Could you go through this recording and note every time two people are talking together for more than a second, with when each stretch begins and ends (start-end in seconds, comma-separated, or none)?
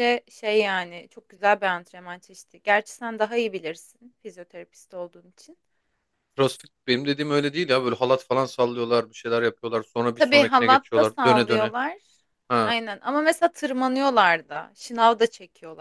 10.1-11.7